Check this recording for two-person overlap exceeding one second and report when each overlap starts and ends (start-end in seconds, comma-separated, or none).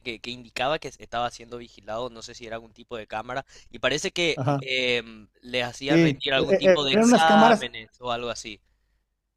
5.9-7.6